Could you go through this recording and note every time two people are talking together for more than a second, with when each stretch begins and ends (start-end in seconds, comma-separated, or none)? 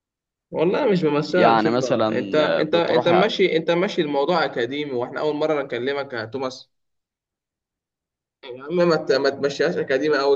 1.3-3.2